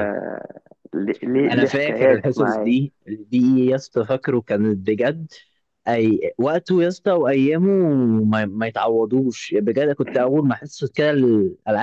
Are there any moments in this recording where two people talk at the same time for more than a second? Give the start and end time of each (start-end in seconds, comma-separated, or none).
1.5-2.7